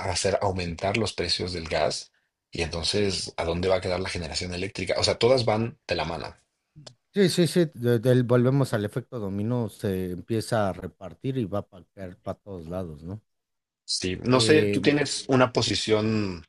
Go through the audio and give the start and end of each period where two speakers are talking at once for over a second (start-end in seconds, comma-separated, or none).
none